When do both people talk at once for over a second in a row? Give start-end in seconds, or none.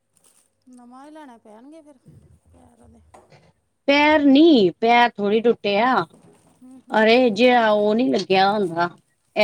none